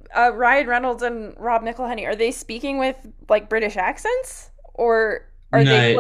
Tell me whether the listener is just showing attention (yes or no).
no